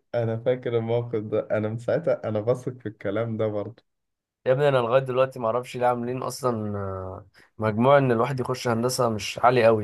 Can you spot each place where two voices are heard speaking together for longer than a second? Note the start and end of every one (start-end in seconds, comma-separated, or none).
none